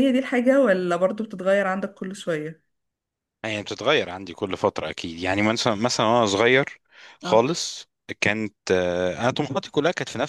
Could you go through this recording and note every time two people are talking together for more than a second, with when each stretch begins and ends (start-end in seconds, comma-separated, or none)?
none